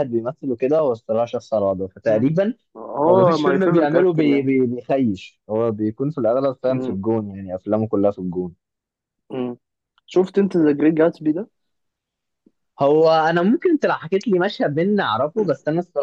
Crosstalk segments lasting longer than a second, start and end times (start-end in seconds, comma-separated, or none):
3.1-4.5